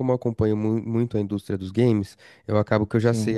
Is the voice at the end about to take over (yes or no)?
no